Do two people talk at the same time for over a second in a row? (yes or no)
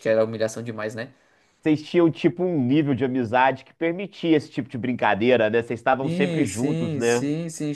yes